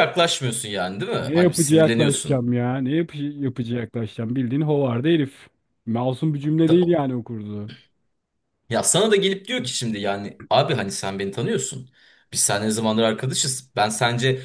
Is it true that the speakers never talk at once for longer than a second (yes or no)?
no